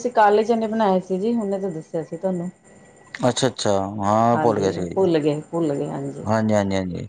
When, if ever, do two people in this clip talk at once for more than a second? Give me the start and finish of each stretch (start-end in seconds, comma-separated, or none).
4.3-5.9